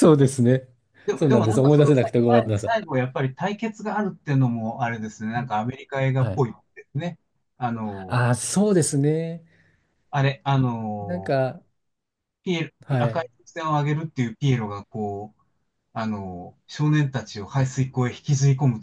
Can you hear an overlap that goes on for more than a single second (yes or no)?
yes